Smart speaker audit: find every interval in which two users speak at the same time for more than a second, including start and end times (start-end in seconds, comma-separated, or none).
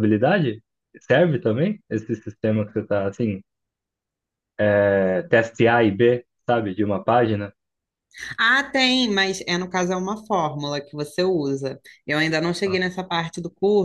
none